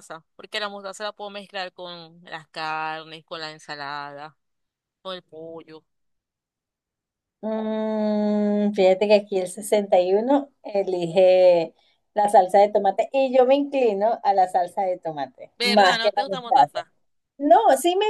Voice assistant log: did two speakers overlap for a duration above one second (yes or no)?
yes